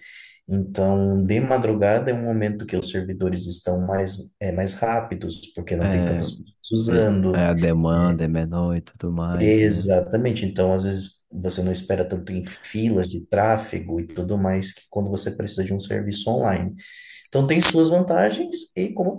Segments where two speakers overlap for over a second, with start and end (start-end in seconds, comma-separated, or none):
none